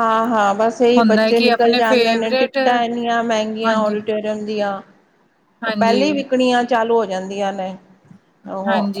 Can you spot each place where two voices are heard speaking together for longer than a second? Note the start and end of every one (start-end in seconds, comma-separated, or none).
1.0-2.6